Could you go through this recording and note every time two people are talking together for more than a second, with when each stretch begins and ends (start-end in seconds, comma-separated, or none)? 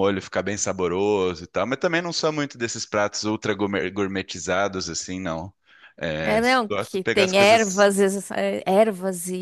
6.2-7.9